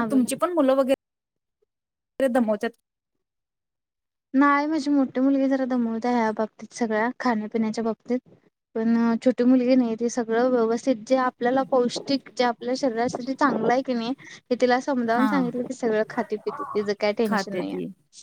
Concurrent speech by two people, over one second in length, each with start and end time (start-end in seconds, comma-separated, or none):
none